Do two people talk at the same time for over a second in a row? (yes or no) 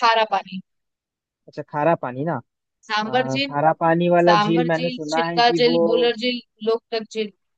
yes